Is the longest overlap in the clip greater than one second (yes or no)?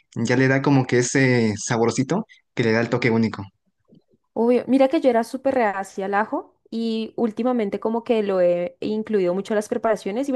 no